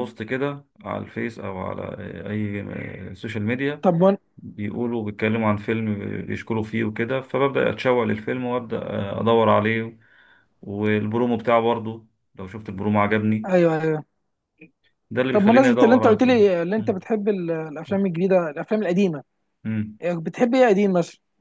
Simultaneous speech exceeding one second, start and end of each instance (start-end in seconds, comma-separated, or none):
15.3-17.0